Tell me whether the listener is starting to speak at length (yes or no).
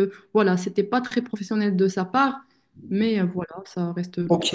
yes